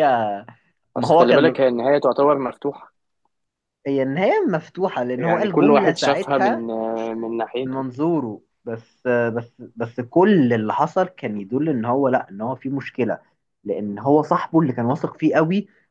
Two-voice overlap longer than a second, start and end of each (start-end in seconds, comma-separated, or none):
5.2-6.7